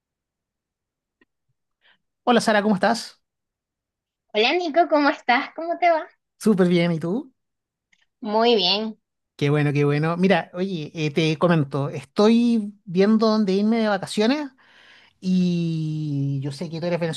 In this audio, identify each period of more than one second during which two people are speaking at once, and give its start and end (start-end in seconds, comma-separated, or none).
none